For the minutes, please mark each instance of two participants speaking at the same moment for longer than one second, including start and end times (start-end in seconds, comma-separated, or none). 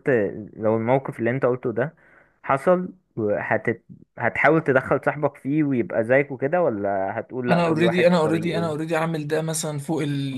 7.5-8.8